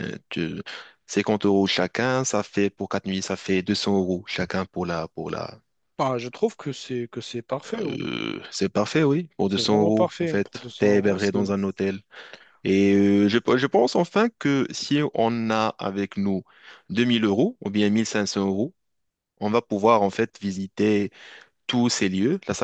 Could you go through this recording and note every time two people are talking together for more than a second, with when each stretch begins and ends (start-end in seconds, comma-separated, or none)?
9.4-11.5